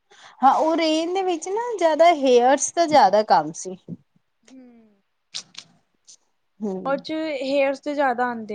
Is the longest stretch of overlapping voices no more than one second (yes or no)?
yes